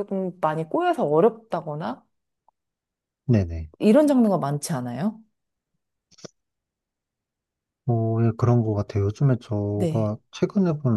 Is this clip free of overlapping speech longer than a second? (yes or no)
yes